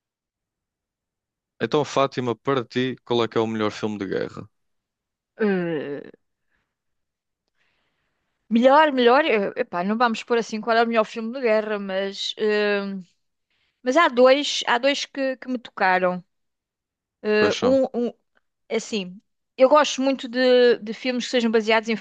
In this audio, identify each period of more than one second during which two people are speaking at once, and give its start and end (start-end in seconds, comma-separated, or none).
none